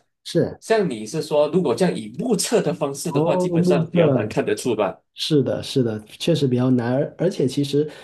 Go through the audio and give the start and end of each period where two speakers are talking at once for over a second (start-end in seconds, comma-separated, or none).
3.1-4.4